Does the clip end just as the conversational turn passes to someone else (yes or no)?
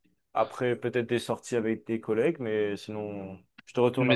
yes